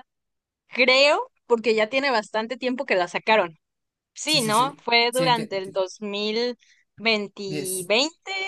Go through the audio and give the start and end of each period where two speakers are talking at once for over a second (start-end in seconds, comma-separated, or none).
4.2-5.8